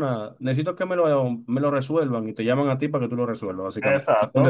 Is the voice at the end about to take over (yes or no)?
yes